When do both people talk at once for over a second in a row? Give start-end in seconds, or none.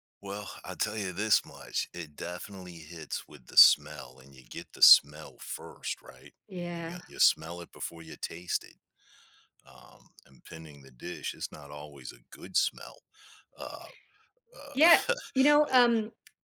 none